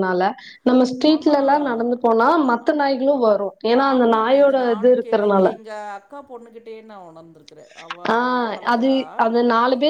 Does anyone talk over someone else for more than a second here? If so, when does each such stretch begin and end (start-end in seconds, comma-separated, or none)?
none